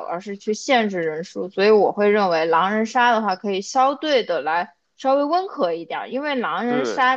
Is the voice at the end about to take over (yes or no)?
no